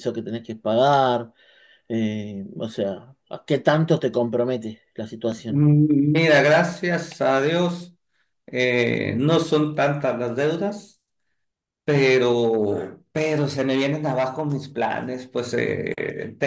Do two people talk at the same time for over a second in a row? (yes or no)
no